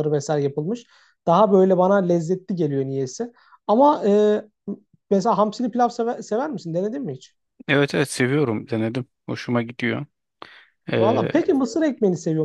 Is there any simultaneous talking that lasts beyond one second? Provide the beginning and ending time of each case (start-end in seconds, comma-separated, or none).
none